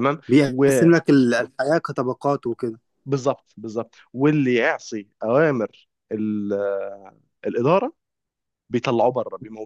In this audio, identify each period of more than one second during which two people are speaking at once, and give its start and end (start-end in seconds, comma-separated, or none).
none